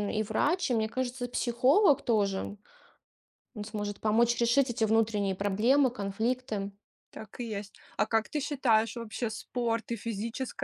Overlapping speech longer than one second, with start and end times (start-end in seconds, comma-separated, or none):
none